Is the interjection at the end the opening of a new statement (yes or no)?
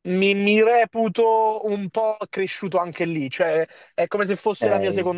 no